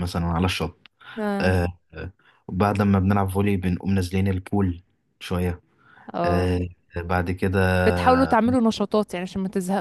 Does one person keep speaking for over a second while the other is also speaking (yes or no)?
no